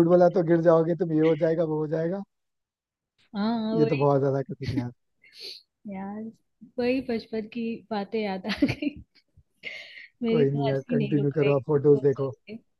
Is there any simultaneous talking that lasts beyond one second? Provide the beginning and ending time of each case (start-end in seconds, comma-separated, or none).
10.3-12.3